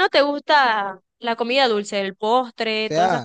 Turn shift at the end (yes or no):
yes